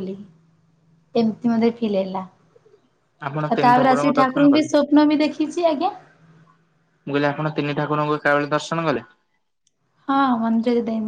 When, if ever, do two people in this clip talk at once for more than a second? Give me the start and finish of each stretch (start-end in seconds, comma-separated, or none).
3.2-4.7